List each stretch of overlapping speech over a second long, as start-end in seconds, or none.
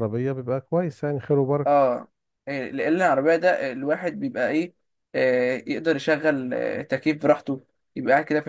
none